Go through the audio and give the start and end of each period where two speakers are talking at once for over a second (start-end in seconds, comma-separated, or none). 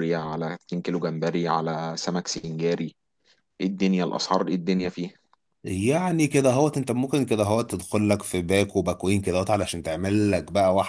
none